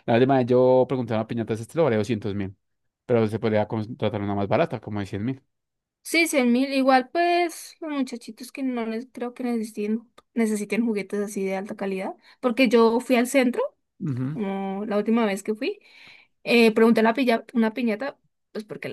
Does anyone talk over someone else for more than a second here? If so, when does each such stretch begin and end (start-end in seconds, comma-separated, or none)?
none